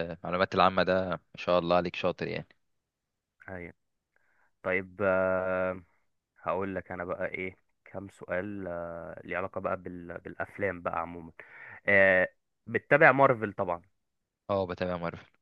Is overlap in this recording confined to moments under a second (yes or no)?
yes